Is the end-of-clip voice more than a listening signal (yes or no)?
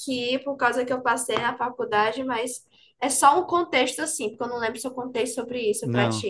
yes